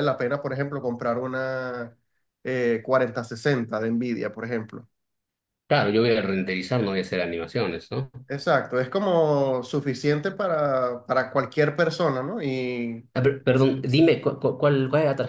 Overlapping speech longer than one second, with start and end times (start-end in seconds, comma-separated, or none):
none